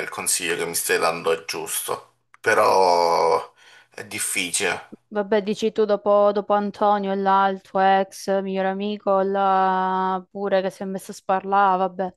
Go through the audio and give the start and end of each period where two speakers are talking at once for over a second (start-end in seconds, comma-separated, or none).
none